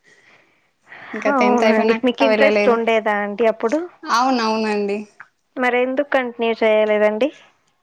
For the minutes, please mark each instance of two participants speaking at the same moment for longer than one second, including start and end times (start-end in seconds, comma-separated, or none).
1.3-2.8